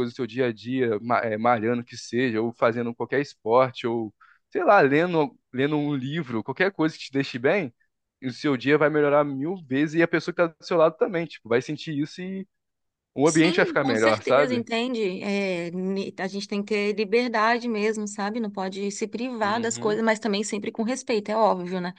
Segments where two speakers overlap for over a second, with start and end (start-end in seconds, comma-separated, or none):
13.2-14.7